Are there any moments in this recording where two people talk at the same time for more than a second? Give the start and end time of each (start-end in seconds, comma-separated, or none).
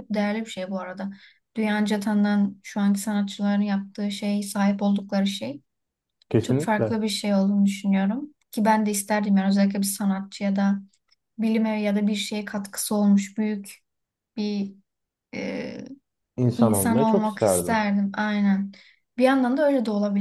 16.6-17.9